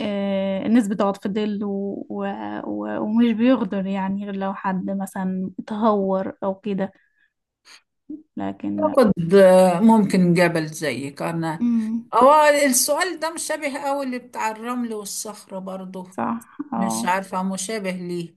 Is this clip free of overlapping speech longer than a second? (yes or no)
yes